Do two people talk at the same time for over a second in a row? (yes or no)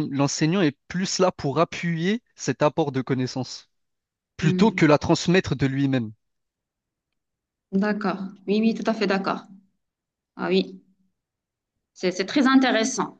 no